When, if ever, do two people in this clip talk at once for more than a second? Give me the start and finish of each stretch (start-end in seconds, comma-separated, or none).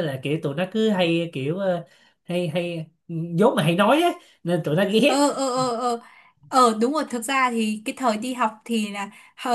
none